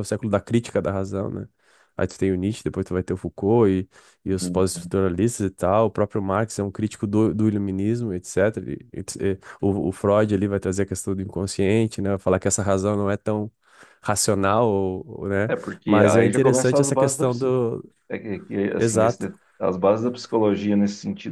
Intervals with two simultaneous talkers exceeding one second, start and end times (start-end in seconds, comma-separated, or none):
15.5-17.2